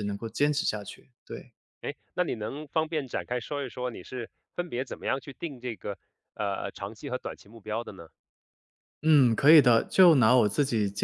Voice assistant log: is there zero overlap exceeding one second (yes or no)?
yes